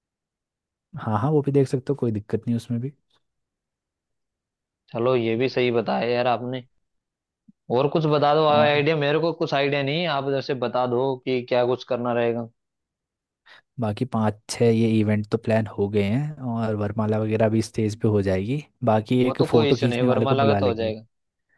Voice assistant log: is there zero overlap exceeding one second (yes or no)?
no